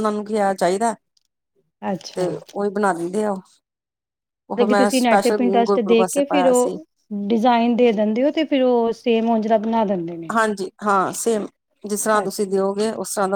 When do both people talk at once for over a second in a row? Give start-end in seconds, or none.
4.6-6.8